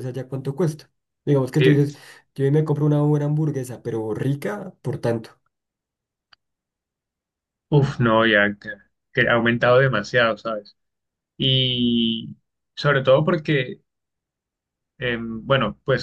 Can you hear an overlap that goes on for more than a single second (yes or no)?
no